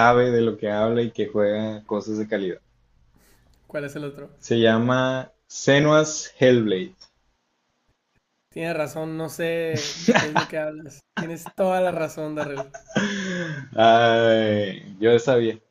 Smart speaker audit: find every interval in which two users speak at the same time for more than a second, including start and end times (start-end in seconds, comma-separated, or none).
none